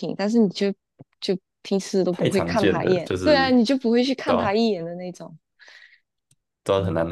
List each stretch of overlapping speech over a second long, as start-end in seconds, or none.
2.1-3.6